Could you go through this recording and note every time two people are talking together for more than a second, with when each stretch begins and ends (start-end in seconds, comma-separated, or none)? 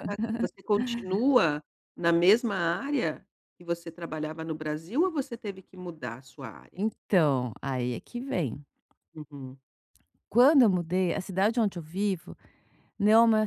none